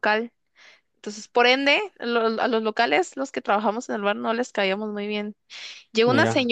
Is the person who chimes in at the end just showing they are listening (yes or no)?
yes